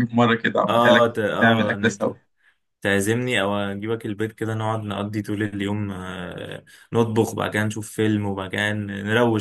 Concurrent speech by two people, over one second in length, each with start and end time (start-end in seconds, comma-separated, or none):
0.7-2.1